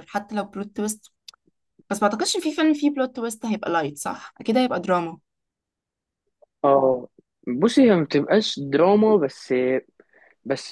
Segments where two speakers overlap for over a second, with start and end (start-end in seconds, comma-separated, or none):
none